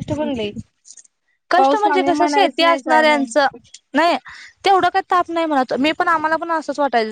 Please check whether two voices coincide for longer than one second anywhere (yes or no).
yes